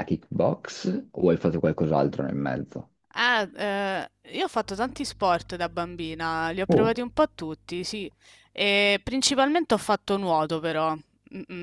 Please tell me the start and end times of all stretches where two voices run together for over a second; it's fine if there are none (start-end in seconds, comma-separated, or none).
none